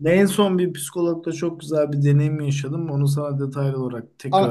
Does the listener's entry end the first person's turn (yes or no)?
yes